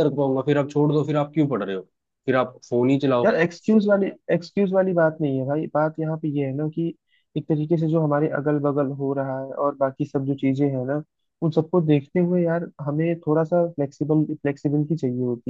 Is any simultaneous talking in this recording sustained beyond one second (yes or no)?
no